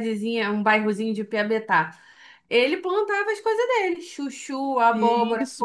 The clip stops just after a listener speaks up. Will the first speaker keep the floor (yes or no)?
no